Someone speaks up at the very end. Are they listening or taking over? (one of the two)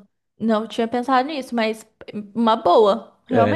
taking over